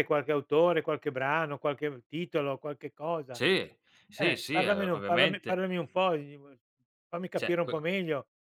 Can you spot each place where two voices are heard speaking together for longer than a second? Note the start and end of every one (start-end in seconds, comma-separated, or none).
4.2-5.6